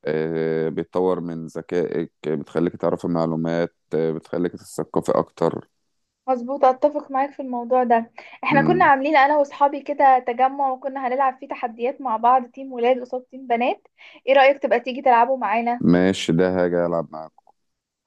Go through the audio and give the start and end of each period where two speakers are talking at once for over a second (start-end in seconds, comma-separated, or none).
none